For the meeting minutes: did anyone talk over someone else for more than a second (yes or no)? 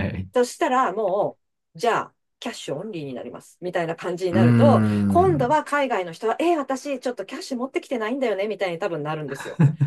yes